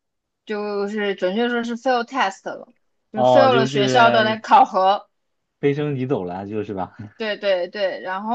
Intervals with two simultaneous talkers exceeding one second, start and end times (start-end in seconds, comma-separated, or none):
3.1-4.4